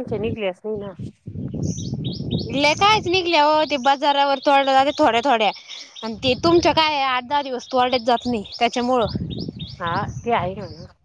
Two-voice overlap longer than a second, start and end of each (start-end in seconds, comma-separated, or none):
none